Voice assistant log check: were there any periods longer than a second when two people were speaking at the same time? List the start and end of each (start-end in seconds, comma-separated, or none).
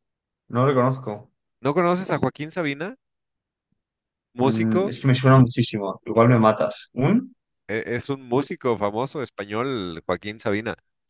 none